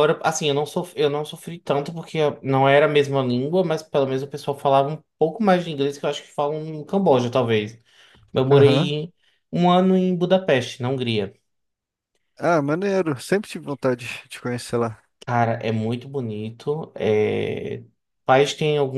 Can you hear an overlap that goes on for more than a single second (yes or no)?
no